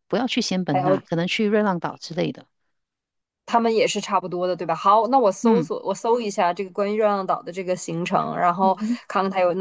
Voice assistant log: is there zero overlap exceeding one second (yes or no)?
yes